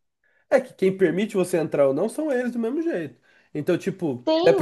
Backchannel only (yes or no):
no